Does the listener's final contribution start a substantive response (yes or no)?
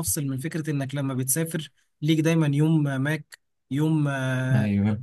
no